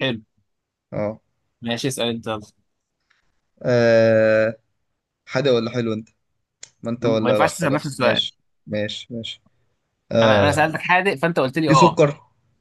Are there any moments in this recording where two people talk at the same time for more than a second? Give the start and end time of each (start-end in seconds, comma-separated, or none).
7.0-8.3